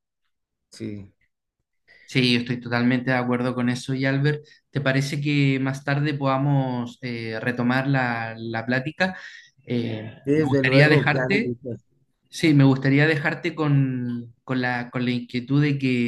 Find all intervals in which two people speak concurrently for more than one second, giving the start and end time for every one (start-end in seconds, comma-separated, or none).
10.2-11.6